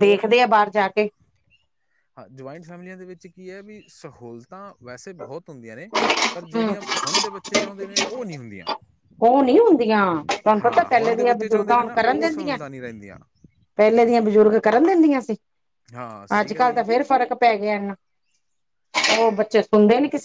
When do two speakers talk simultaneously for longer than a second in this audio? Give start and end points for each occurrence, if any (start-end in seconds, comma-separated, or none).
10.6-12.6